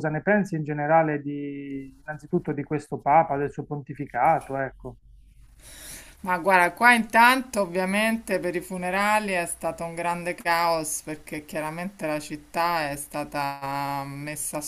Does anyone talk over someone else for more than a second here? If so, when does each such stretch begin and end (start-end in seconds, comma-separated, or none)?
none